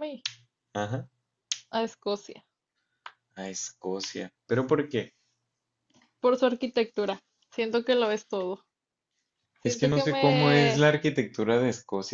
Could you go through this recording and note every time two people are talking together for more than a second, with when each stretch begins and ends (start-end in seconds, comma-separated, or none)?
9.6-10.8